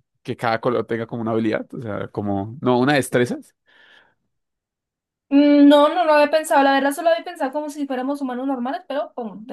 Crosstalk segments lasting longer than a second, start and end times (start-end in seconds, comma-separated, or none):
none